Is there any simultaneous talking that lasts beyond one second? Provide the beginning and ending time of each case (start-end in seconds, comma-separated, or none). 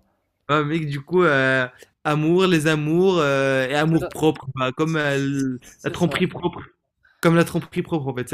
4.9-6.3